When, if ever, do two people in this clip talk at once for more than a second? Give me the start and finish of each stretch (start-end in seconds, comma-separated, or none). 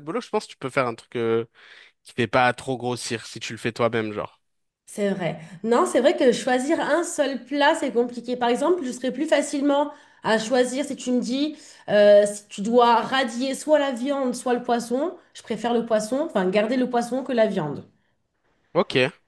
none